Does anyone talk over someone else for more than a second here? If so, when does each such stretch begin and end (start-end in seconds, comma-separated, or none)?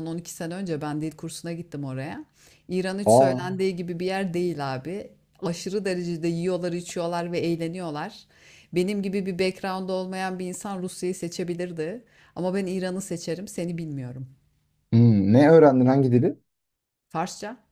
none